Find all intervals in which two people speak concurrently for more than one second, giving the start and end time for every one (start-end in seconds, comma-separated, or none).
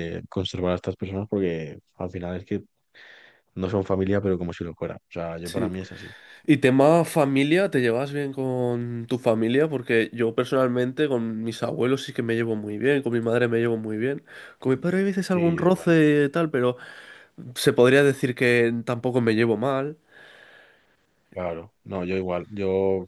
none